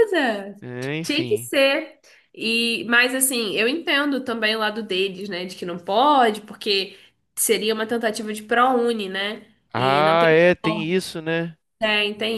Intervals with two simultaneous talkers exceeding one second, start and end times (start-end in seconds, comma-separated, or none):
9.7-11.0